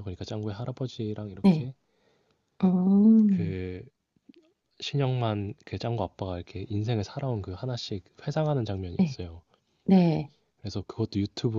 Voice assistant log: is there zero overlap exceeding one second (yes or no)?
yes